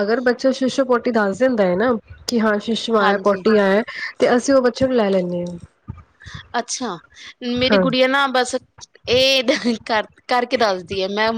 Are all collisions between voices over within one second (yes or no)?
yes